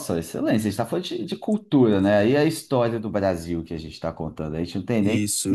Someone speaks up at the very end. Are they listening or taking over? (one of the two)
listening